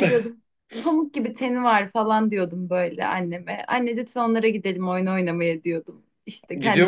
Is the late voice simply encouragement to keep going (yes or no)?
yes